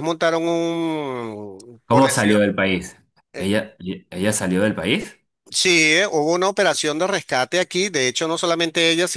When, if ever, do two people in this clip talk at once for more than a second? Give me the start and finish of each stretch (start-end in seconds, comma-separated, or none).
none